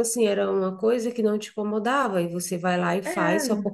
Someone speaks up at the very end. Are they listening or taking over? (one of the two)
listening